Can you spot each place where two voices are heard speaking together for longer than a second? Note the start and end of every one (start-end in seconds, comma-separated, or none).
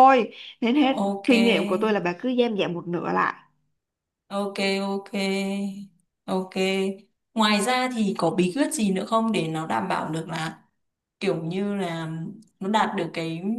none